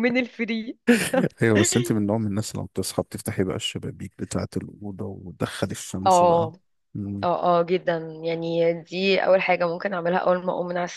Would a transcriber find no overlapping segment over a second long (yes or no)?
yes